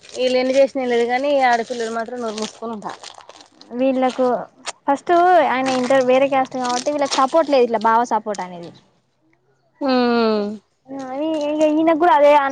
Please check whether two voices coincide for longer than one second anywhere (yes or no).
no